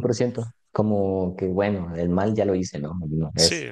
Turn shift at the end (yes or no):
no